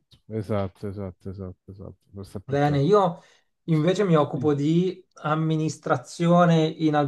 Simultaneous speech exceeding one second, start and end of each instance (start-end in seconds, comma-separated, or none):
none